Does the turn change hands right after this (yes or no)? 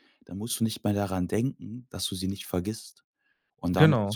no